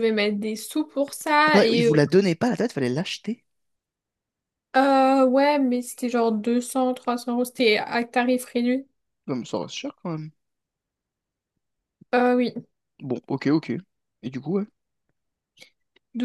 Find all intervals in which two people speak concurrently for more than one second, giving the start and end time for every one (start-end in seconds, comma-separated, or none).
none